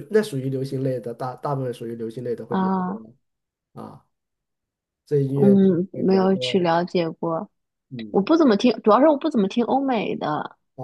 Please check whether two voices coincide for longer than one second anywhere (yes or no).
yes